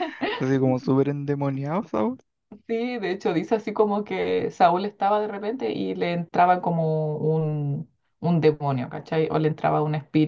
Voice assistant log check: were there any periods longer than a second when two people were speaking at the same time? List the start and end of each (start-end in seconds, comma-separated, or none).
none